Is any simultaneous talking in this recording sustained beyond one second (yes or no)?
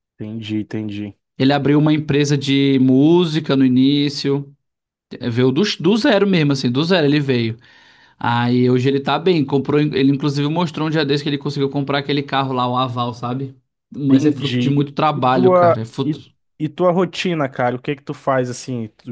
yes